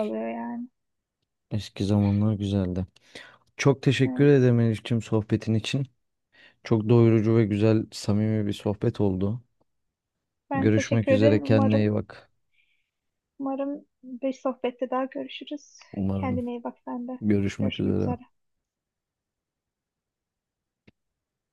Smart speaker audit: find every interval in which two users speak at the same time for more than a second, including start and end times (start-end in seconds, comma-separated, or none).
10.5-11.9